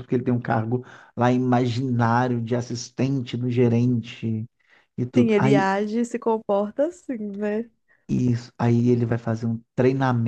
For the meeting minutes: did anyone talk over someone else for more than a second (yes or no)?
no